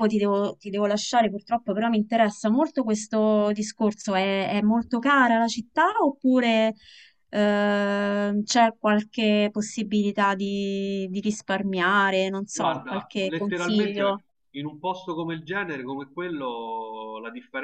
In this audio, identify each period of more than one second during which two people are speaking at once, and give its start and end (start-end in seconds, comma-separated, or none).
12.5-14.2